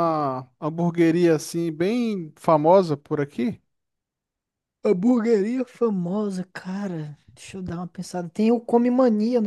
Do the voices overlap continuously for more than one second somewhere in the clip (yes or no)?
no